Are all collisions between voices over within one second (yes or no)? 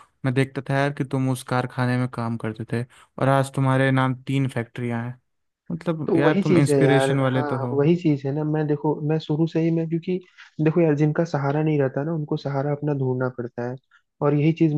no